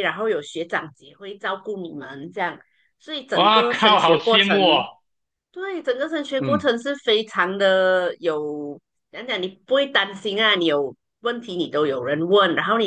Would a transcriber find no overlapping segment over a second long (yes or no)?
no